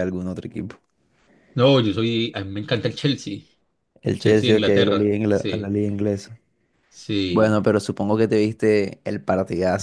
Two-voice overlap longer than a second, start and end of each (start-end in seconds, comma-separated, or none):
4.0-5.8